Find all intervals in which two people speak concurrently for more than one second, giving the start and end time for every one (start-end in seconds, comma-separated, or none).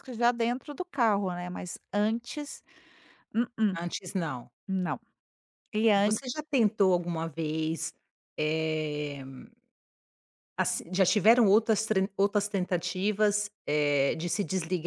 none